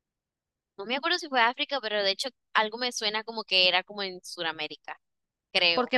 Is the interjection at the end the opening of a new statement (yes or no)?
yes